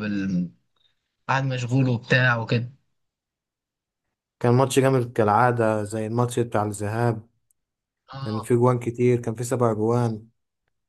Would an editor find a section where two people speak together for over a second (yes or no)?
no